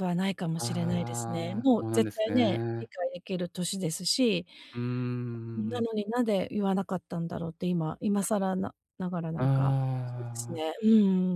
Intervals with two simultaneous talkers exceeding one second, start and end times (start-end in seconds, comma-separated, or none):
0.6-2.9